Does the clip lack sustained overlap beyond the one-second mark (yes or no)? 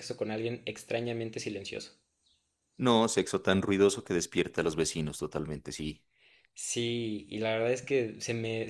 yes